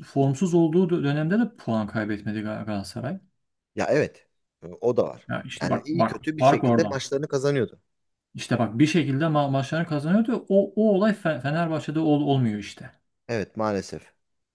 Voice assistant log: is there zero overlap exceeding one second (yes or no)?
no